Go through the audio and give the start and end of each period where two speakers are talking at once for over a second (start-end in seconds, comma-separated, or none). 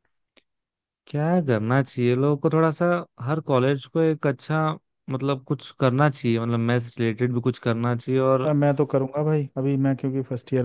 none